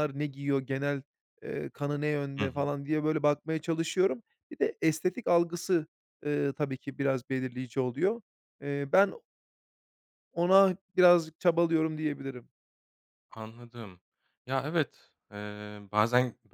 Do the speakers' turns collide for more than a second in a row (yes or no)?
no